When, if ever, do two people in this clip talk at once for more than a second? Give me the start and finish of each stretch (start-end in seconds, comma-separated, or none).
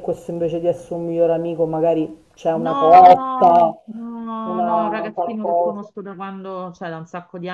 2.5-3.7, 4.4-5.9